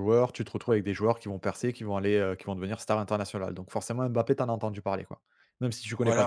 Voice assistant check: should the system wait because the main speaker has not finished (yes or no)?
no